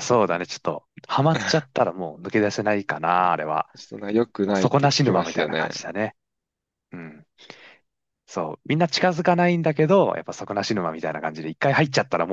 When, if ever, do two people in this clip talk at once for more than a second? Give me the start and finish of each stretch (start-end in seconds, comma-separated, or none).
4.4-5.7